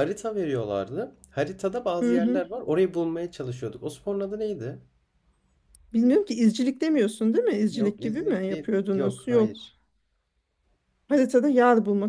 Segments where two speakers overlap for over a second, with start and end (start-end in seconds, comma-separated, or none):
7.7-9.6